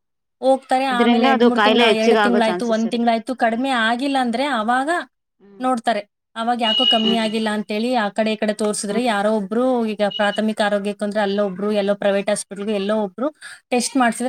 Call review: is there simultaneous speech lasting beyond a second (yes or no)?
yes